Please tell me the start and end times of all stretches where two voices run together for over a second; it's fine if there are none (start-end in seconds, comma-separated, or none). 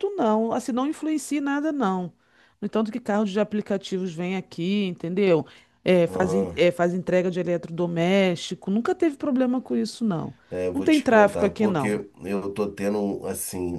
10.7-12.0